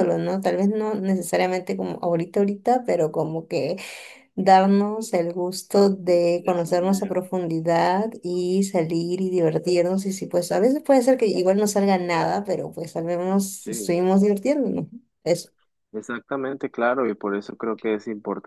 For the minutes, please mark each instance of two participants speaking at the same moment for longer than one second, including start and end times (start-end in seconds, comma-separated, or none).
6.0-7.2